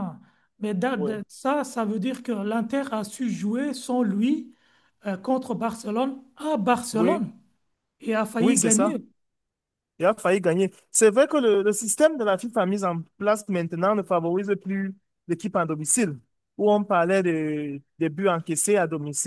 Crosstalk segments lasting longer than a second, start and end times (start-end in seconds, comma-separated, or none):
none